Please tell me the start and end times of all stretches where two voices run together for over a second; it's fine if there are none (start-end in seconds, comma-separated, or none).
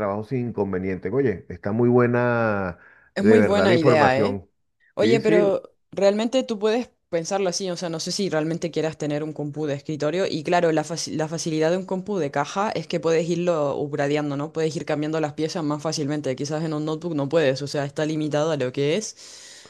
3.2-4.4